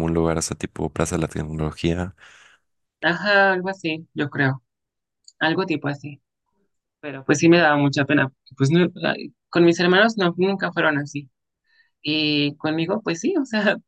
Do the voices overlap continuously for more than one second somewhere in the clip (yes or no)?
no